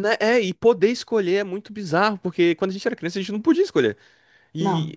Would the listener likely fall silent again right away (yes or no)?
yes